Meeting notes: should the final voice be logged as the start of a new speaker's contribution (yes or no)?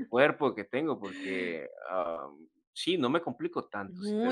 yes